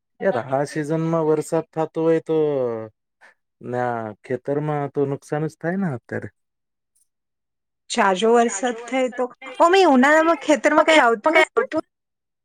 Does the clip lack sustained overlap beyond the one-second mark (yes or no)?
no